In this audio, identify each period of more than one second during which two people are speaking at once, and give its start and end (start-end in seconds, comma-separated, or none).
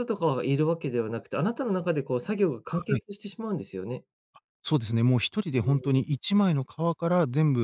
none